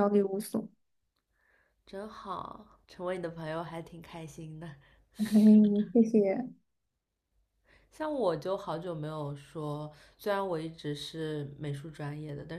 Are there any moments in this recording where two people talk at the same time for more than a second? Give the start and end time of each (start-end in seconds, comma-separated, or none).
none